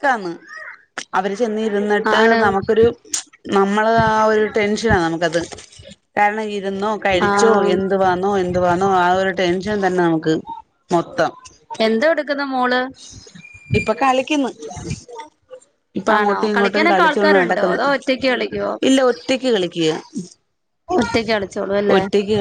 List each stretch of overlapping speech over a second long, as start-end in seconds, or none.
16.2-17.8